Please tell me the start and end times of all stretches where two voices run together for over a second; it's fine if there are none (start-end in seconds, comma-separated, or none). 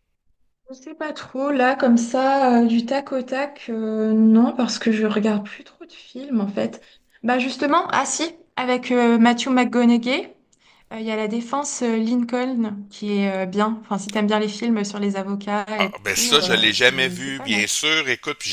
15.8-17.7